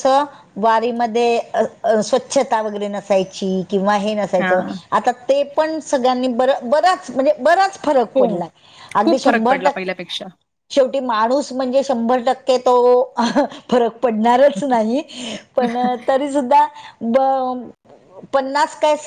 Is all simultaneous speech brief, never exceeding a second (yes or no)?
no